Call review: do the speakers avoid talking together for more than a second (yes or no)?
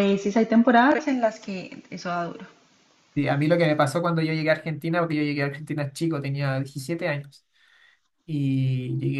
yes